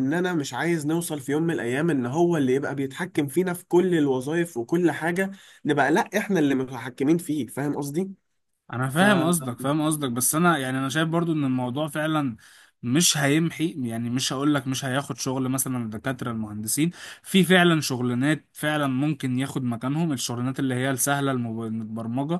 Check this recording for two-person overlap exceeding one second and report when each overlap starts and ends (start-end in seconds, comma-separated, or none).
none